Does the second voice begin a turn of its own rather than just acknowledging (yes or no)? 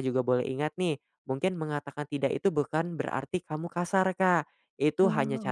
no